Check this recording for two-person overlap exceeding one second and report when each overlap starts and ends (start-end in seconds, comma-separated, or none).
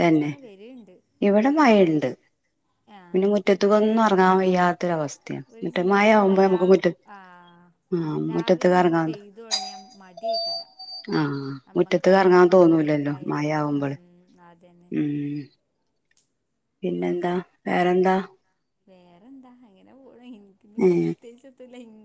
12.6-13.9